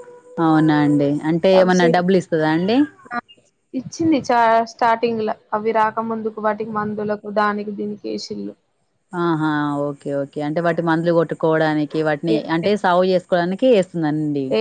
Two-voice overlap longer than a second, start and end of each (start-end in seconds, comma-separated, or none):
none